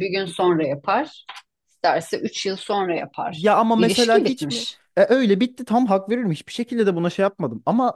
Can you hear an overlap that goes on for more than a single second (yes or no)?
yes